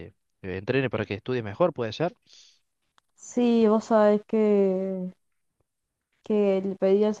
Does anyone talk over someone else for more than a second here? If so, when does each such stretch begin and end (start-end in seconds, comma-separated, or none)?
none